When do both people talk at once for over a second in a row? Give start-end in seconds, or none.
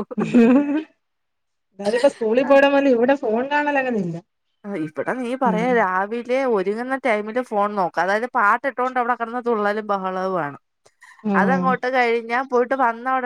none